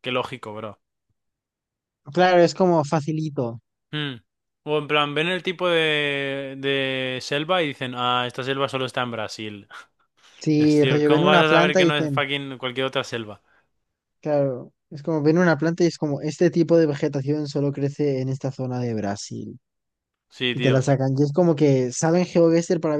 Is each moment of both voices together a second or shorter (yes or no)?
no